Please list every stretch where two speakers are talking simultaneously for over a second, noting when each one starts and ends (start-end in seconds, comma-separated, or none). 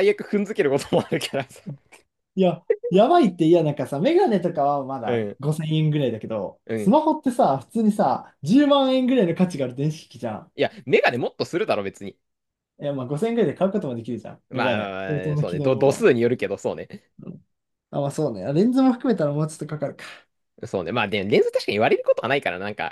14.5-16.1